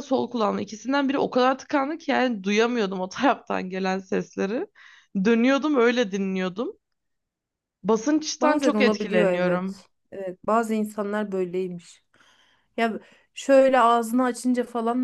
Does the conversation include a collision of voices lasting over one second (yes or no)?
yes